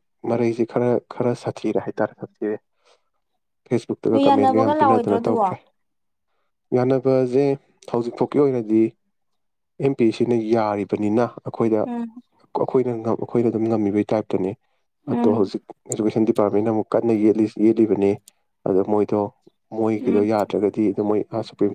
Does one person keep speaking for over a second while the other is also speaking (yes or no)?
yes